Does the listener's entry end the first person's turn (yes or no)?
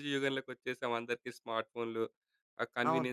no